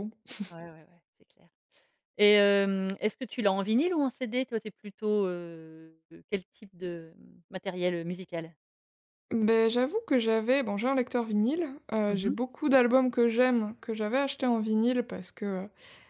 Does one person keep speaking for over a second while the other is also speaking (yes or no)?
no